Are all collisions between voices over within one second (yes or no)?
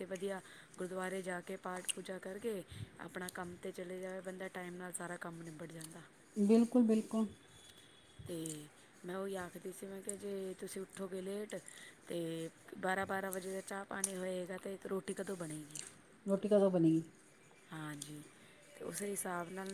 yes